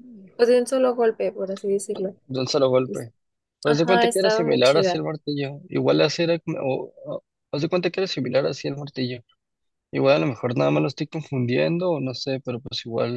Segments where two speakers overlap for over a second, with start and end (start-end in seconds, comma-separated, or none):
3.6-5.0